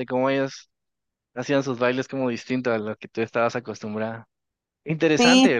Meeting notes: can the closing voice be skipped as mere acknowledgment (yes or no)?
no